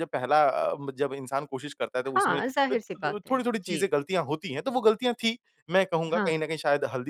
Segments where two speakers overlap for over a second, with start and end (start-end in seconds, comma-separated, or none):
2.0-3.9